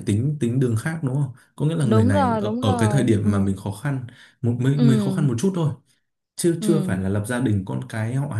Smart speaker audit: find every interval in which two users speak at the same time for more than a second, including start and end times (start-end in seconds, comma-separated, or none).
1.8-3.3